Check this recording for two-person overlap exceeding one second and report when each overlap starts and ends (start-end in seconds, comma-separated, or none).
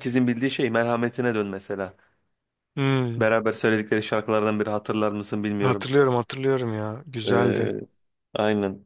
none